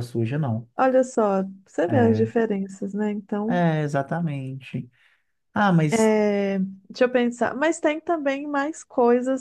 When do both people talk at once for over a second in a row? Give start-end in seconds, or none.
none